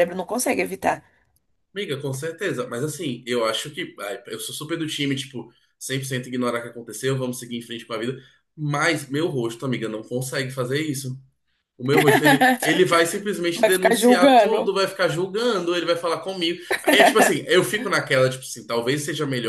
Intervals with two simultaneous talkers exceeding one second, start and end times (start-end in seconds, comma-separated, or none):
13.5-14.7